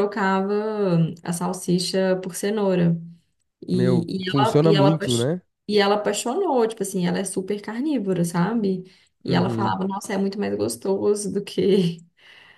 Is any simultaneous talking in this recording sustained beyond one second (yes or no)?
yes